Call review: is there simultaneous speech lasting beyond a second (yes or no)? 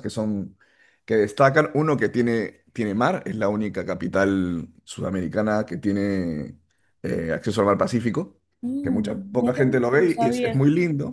yes